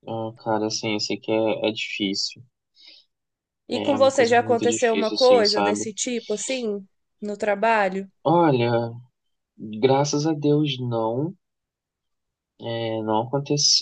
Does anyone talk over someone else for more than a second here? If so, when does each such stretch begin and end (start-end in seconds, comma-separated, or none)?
3.7-5.8